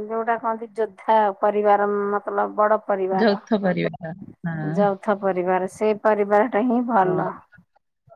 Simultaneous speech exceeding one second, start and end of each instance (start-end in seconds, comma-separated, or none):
none